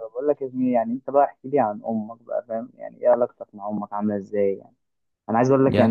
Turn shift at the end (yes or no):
no